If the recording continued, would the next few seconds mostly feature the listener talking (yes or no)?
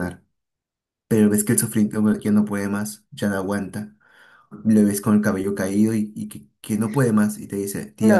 yes